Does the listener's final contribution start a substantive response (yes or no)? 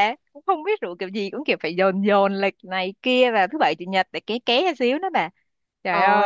yes